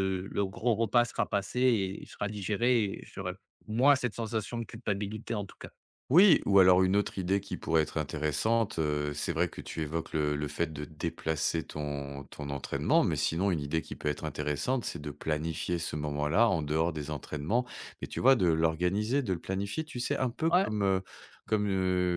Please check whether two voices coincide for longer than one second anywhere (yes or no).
no